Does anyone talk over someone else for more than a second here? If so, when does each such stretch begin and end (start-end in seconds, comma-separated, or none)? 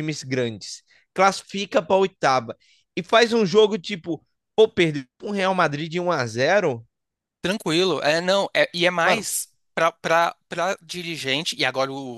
none